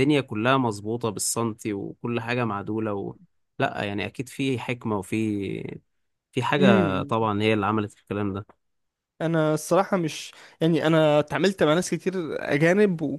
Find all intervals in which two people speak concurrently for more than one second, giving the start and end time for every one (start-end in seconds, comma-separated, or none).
none